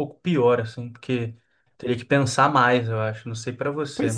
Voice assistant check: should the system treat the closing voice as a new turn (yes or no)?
yes